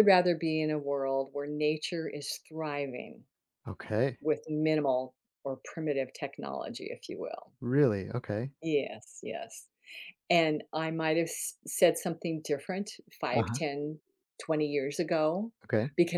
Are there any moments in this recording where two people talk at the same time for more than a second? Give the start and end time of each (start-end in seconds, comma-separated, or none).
none